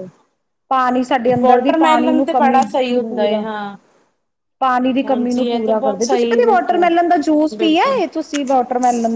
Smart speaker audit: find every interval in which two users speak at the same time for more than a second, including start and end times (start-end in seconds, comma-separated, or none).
1.4-3.4, 5.1-8.0